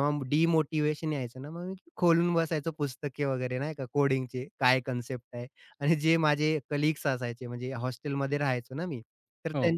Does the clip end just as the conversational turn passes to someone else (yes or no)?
no